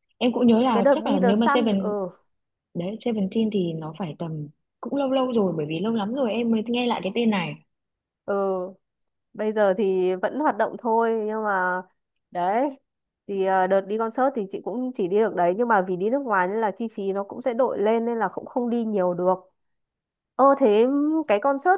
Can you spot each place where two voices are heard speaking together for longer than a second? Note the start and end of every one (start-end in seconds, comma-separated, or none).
0.7-1.9